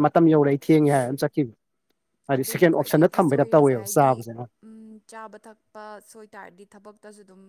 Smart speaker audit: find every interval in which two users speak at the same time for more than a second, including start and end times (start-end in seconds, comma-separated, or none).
2.4-4.1